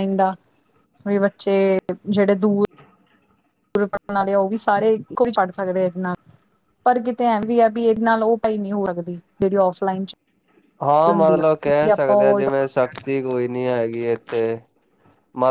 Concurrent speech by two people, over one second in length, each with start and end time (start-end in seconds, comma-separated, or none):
11.1-12.4